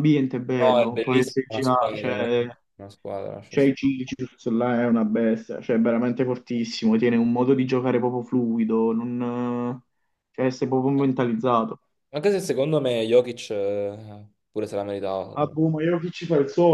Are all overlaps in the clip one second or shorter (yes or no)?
no